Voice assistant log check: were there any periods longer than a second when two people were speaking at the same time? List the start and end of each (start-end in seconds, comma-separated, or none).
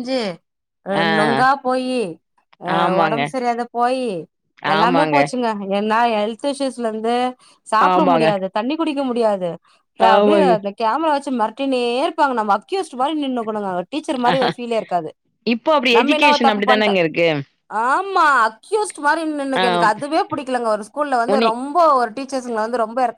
none